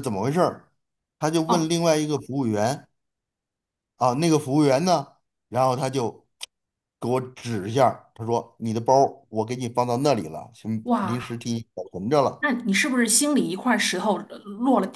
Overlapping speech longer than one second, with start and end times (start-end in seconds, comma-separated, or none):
none